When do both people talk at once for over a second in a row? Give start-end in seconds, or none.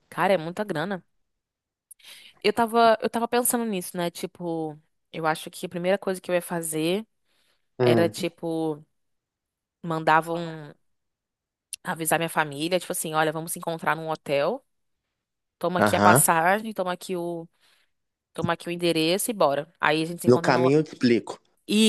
none